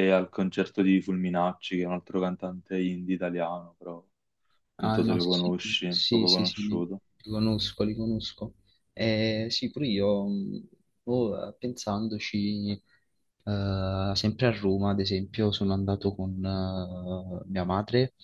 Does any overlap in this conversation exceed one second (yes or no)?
yes